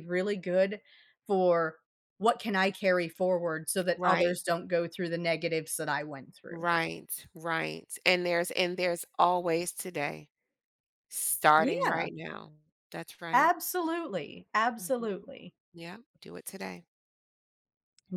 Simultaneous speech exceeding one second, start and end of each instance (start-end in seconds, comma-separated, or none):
none